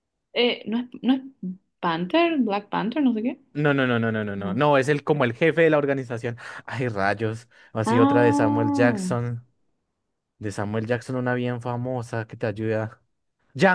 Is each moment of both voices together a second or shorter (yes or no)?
no